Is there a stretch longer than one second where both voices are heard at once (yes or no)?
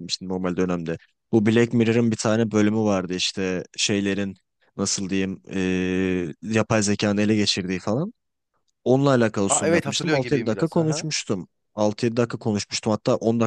yes